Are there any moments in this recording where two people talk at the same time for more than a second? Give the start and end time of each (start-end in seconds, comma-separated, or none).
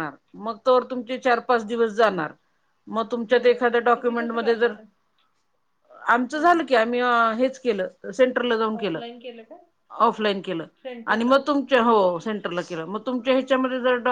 3.3-4.7